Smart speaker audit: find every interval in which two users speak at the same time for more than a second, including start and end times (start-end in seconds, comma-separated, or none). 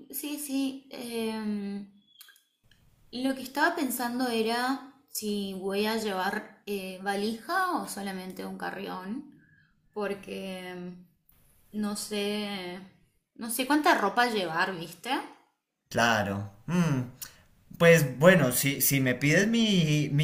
none